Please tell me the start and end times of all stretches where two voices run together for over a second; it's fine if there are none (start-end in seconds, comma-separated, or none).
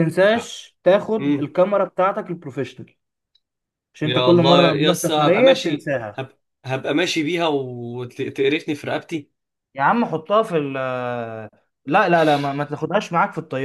4.0-6.2